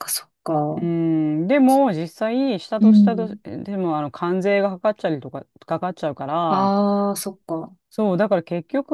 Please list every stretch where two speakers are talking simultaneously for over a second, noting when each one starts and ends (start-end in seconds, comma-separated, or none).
none